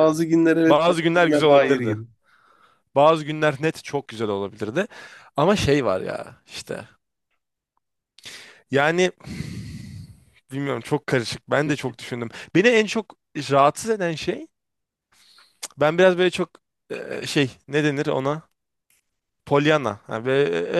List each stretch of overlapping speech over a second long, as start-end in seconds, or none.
0.7-2.0